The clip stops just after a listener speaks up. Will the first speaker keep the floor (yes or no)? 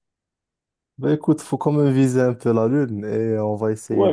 no